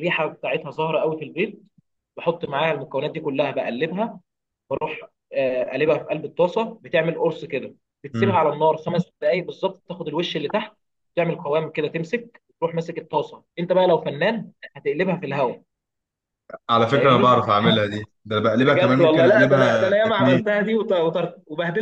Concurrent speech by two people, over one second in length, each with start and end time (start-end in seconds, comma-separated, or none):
18.6-20.5